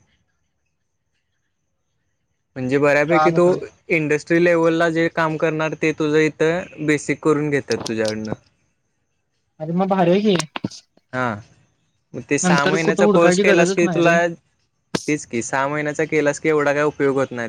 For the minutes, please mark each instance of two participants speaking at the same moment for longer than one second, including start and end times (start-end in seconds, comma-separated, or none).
12.4-14.2